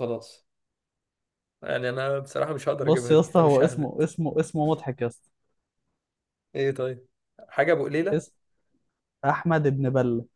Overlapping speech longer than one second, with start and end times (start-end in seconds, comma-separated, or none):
2.8-4.0